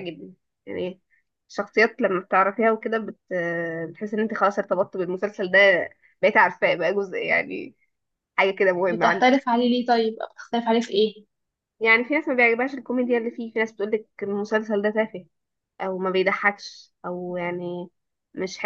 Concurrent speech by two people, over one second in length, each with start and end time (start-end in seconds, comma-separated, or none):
none